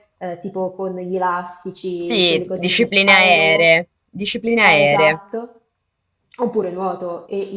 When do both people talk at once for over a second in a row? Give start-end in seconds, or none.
2.0-3.8